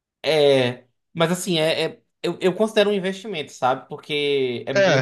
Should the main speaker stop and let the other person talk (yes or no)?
no